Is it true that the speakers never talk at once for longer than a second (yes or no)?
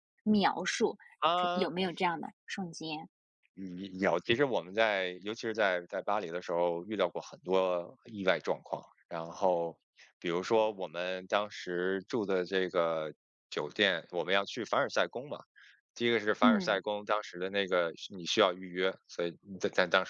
yes